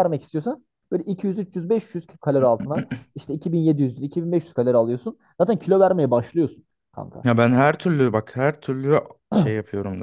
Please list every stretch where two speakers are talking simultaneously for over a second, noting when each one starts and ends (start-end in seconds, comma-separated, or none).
none